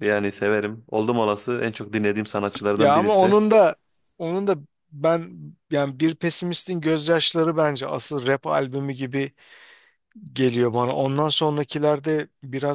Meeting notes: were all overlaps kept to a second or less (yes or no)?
yes